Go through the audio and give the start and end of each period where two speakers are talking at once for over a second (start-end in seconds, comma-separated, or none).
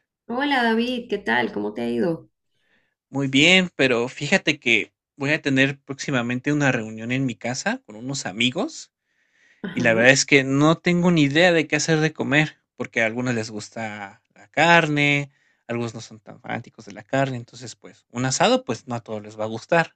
none